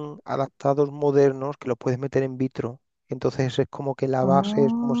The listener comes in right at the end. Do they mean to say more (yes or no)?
no